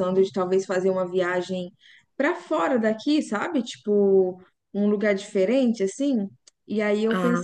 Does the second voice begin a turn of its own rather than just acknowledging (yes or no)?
no